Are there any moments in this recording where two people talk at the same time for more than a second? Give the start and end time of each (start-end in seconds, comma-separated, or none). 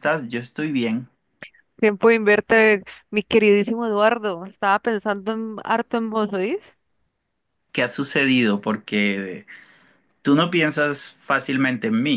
none